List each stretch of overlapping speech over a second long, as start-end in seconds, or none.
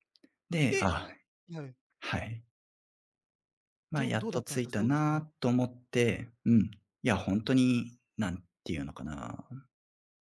3.9-5.2